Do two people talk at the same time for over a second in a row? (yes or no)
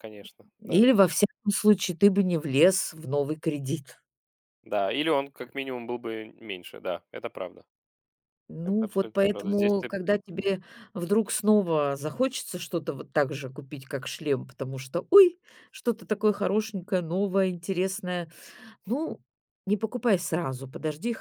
yes